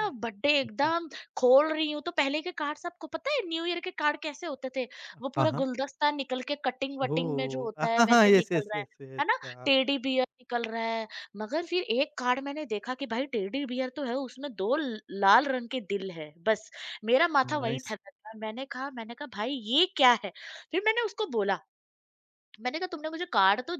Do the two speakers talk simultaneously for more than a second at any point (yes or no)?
yes